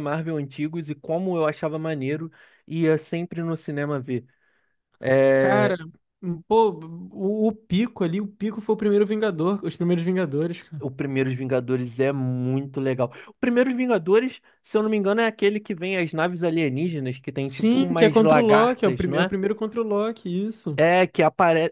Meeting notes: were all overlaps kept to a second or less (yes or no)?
no